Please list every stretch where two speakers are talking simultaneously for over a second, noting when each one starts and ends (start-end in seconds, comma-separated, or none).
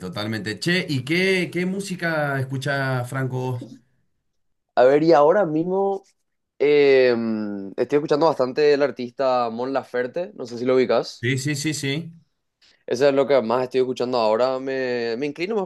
none